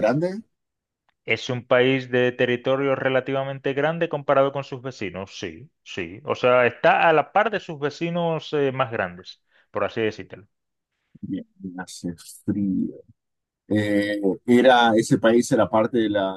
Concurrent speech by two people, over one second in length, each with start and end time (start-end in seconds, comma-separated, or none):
none